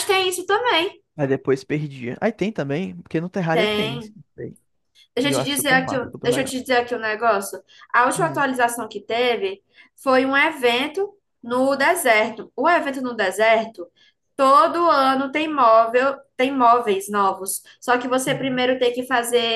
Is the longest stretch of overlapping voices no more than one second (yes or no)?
no